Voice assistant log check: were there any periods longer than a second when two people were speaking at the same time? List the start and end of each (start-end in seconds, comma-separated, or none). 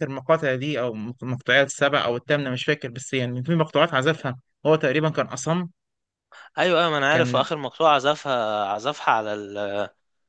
none